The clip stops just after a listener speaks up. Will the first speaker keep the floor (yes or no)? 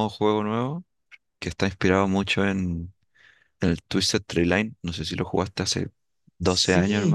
no